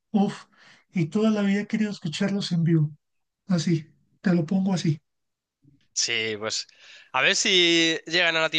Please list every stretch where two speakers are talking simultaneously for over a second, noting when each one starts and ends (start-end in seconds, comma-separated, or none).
none